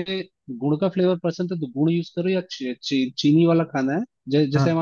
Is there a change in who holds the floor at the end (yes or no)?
no